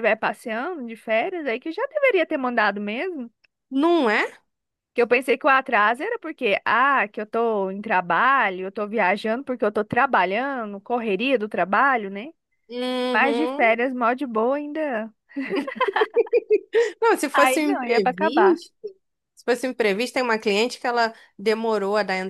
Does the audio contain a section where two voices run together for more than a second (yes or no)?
yes